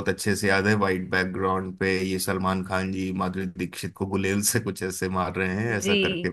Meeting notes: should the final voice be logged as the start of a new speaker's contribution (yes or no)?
yes